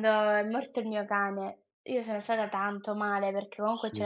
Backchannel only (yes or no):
yes